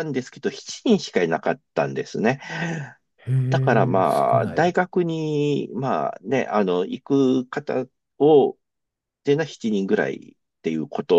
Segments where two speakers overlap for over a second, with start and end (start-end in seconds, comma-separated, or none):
3.5-4.7